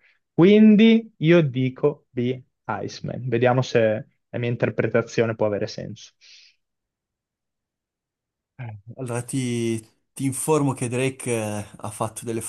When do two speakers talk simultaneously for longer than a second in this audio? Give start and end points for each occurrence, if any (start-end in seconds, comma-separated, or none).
none